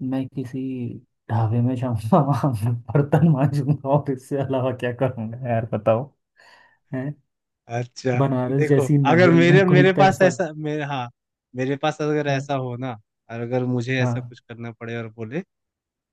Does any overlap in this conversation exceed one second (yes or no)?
yes